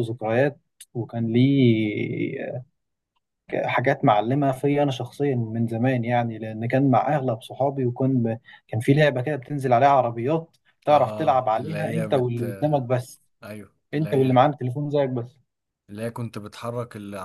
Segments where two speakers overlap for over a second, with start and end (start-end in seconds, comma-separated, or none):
10.9-12.8